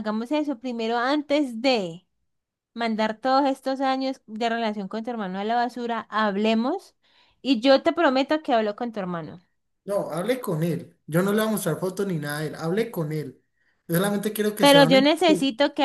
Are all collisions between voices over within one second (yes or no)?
yes